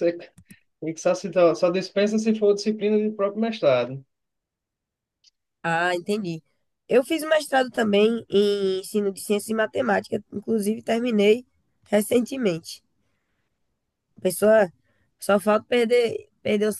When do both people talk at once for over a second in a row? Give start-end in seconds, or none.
none